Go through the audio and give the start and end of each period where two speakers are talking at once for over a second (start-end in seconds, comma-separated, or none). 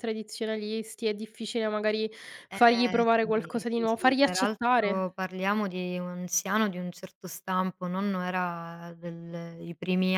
2.5-5.1